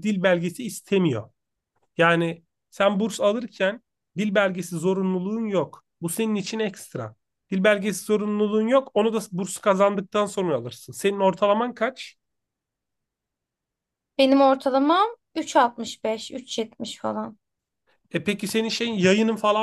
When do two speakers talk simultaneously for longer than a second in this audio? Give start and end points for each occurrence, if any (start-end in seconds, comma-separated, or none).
none